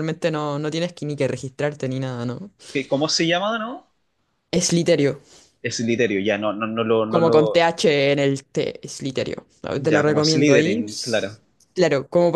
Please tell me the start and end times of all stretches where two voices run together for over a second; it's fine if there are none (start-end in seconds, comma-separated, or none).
9.7-11.2